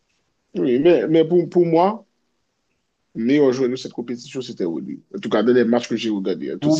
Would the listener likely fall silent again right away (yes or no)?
no